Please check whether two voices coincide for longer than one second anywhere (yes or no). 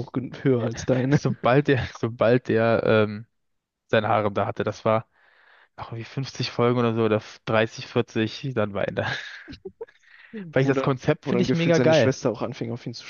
yes